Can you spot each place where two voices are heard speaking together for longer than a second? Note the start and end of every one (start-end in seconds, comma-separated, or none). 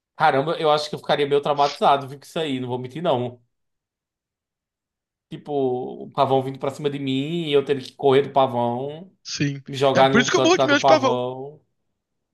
9.7-11.2